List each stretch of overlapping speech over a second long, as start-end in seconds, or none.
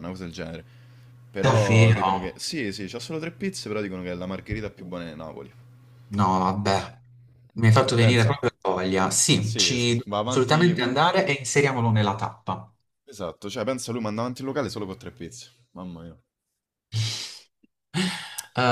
9.4-10.9